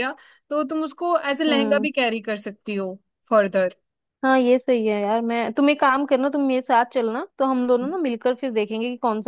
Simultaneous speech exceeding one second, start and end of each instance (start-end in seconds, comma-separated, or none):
none